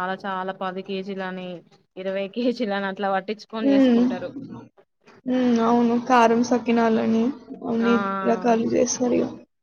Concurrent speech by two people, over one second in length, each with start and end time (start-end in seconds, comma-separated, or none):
none